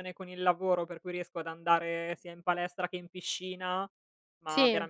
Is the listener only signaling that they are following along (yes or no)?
yes